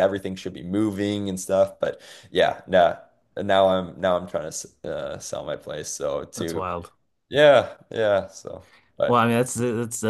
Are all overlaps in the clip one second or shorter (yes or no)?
yes